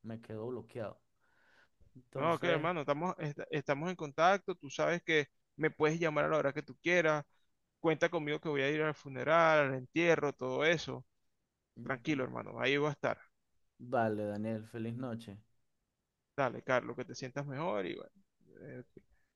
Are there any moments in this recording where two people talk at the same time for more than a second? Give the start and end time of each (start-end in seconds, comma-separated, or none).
none